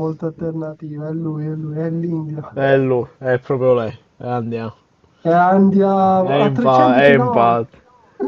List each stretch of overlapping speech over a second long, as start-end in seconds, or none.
6.2-7.7